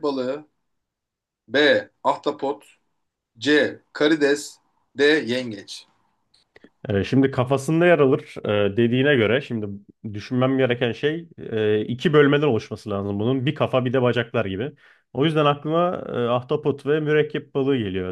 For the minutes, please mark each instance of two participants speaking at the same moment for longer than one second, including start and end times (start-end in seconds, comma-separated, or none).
none